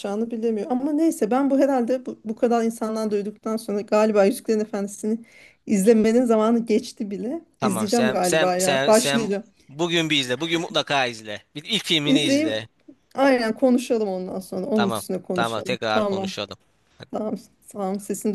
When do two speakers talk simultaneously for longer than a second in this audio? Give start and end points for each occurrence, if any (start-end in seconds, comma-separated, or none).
7.6-9.3, 14.7-16.3